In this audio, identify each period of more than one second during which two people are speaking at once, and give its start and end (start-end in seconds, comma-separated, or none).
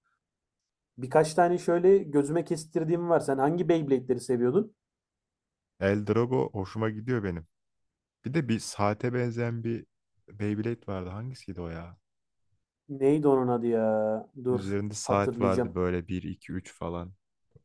14.5-15.8